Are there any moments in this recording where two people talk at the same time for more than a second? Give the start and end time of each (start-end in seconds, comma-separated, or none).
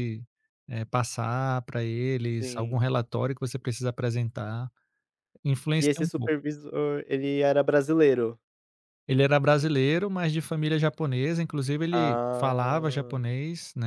11.9-13.3